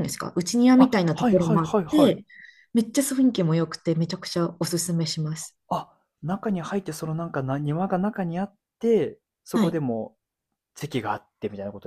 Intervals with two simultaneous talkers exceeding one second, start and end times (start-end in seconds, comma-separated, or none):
0.8-2.1